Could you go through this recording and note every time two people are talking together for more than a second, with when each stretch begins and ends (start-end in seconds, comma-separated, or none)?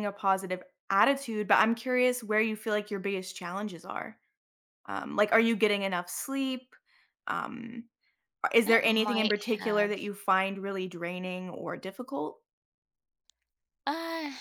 8.7-9.9